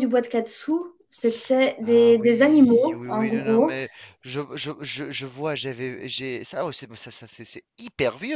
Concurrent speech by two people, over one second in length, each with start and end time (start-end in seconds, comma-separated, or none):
1.8-3.8